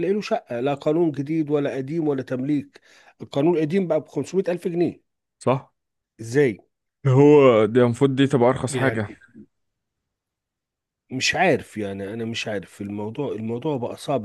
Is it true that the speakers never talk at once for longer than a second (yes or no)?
yes